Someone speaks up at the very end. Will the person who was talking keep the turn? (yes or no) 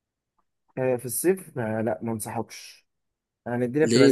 yes